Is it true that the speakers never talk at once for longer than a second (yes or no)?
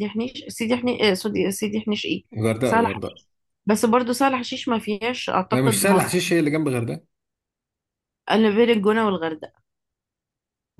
yes